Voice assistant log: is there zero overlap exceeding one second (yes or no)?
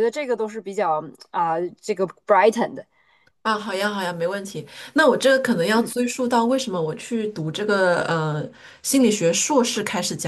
yes